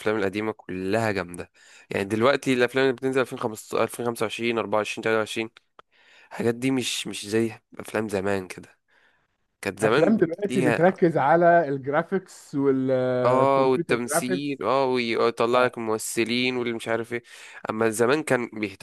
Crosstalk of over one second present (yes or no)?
yes